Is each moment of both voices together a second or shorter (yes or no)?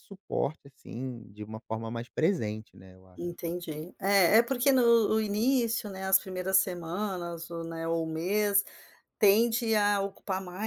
yes